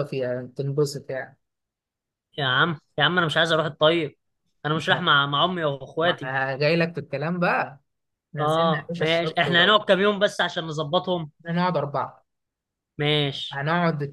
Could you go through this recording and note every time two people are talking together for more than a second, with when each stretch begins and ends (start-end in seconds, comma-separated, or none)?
8.4-9.8